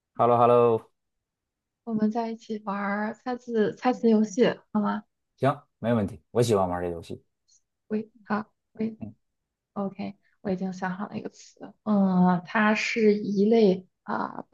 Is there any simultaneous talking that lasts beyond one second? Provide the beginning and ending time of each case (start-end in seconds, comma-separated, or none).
none